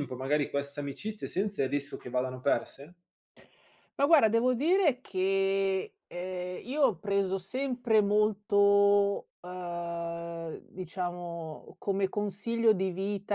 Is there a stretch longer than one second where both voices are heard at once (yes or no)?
no